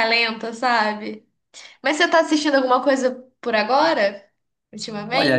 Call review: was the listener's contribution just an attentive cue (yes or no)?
no